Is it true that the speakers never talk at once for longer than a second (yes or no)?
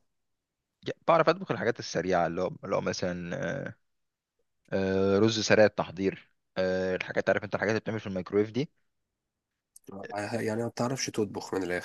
yes